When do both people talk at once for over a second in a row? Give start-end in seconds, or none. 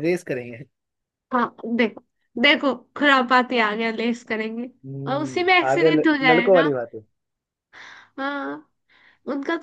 5.1-6.7